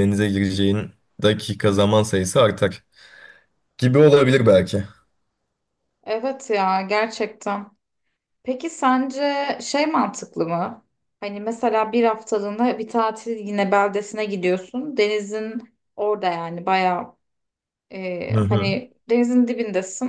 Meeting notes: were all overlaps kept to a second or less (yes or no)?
yes